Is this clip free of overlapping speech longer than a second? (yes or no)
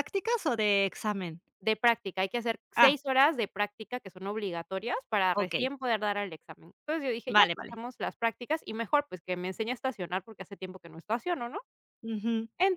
yes